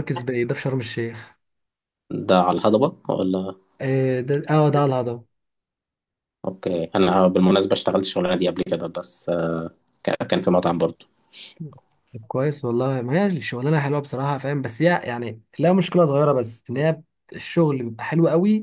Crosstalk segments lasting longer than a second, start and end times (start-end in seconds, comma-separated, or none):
none